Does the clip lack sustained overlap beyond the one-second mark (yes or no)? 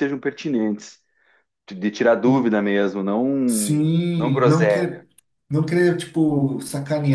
no